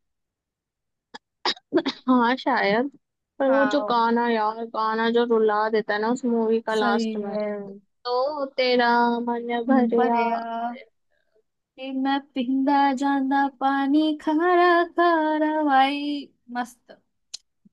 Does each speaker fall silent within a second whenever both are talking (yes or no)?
yes